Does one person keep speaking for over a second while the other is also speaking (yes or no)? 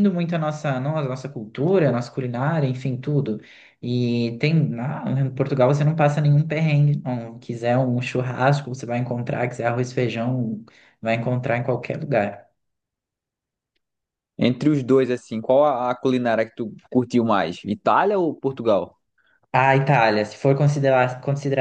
no